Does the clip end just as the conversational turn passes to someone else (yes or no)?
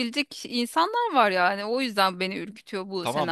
yes